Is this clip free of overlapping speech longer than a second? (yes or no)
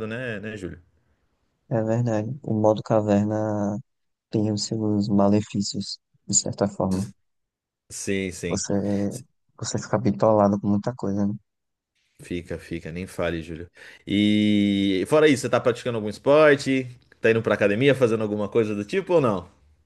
yes